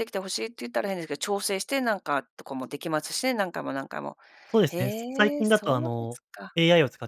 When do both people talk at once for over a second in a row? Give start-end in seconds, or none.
4.7-6.2